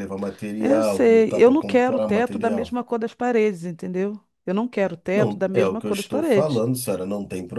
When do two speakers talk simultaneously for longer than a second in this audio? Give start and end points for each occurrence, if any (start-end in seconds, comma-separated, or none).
0.6-2.8, 5.1-6.6